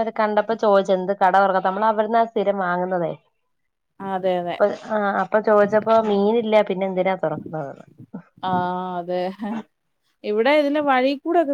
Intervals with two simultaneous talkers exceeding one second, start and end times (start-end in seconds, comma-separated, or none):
none